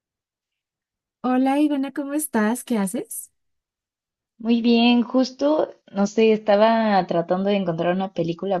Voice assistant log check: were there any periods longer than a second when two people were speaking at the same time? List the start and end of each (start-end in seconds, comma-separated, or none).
none